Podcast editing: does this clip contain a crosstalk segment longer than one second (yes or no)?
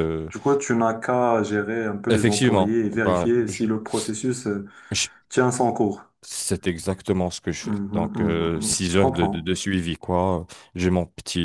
yes